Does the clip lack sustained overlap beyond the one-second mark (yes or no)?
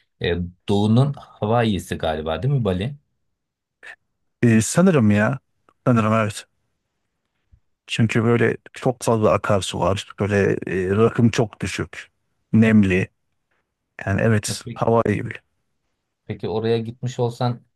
yes